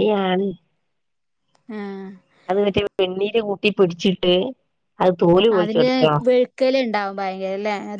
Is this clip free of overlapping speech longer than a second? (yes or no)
yes